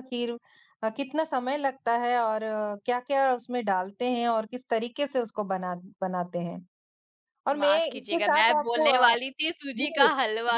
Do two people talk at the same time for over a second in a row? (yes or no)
yes